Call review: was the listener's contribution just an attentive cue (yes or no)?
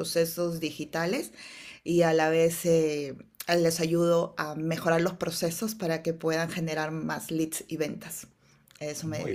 no